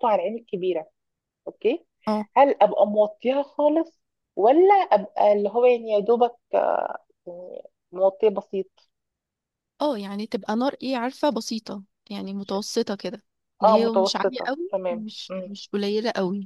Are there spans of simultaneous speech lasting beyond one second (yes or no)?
yes